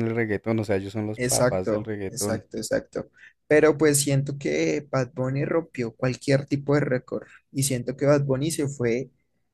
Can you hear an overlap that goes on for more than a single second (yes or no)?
yes